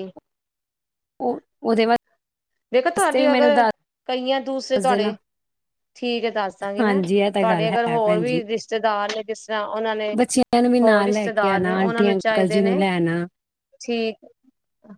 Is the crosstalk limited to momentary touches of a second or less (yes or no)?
no